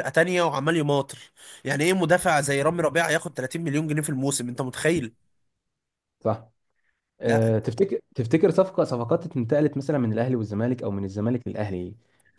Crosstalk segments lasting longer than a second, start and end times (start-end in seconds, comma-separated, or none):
none